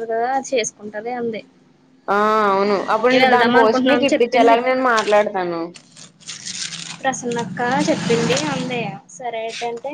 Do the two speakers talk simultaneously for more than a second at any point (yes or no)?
yes